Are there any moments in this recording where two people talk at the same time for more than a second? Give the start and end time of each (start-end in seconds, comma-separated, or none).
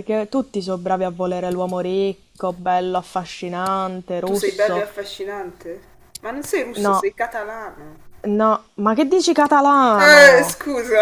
none